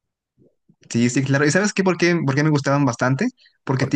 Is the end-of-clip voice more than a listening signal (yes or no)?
no